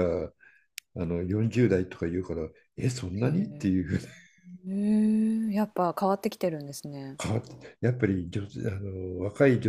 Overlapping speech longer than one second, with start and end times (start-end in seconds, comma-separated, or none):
none